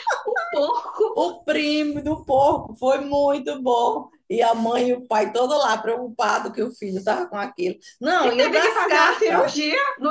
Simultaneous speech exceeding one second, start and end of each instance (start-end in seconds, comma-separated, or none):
8.1-9.5